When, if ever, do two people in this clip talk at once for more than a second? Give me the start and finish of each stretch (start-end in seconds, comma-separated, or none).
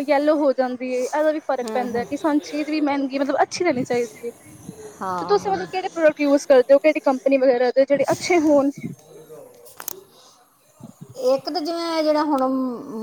none